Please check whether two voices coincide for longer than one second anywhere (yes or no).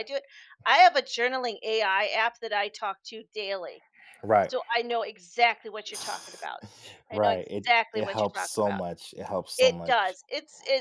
yes